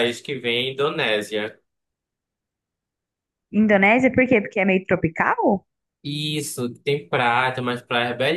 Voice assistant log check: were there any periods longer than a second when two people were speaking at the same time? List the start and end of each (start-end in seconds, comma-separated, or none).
none